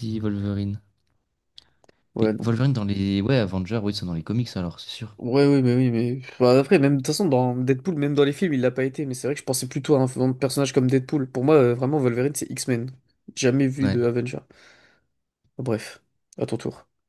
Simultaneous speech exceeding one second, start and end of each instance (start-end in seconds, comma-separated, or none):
none